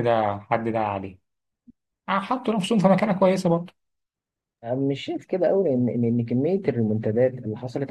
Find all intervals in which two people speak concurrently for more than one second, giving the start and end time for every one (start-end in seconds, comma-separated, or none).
none